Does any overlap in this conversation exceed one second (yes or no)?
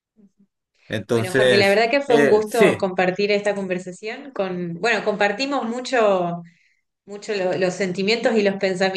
yes